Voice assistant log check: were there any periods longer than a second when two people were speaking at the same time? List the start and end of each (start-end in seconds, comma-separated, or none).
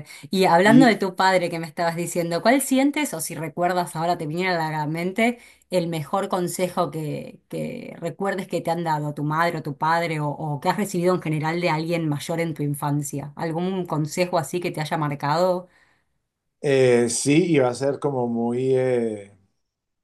none